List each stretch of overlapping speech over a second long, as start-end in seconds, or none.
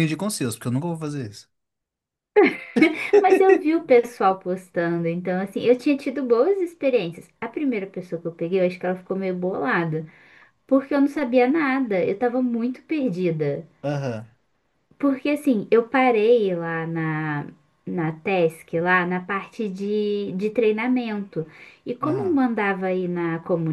none